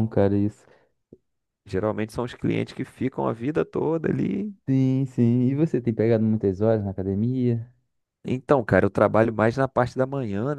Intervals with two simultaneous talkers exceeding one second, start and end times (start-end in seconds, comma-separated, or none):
none